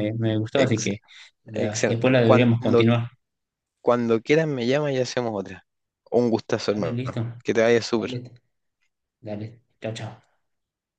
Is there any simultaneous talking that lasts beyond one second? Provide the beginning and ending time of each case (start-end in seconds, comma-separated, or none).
1.5-2.8